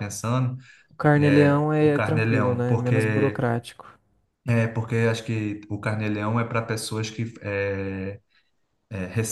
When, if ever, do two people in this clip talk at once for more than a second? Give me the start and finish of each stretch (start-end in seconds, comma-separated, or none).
1.2-3.5